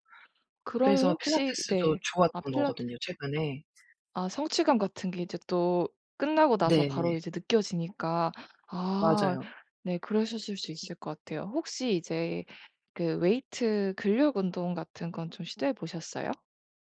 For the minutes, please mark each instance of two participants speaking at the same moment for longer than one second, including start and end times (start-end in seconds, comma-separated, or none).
0.8-2.9